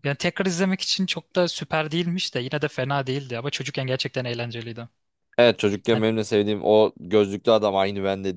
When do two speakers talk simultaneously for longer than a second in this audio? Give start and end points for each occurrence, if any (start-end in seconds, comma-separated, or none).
none